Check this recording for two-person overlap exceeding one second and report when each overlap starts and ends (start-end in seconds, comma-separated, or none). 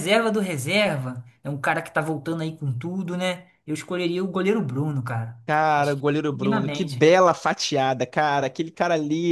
5.8-7.1